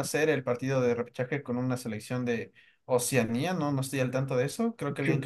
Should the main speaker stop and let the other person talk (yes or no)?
no